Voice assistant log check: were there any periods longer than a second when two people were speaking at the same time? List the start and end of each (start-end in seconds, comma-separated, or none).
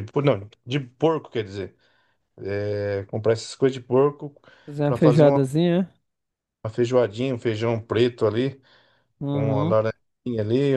none